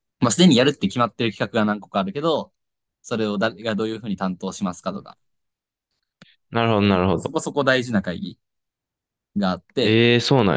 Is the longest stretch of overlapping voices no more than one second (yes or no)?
yes